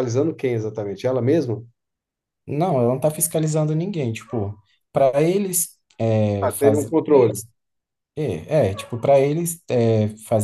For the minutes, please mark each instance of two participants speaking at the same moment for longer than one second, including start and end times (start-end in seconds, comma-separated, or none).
none